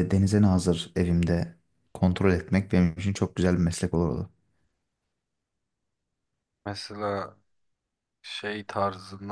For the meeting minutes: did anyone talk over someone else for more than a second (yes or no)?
no